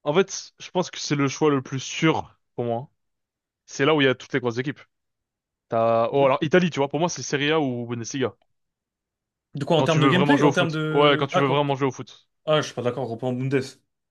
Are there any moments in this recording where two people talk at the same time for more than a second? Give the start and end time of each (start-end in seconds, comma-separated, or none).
9.8-11.6